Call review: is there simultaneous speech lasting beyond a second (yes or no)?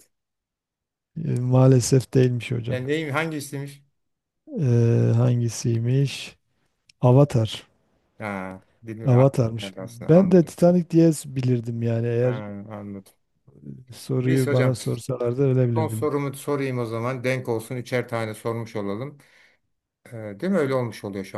yes